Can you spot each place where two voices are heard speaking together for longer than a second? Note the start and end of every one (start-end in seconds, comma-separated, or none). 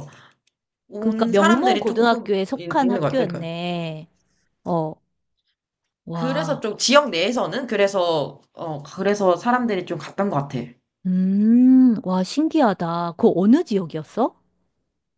1.0-3.5